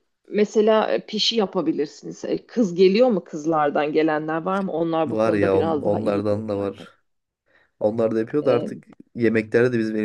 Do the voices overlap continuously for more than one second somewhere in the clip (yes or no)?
yes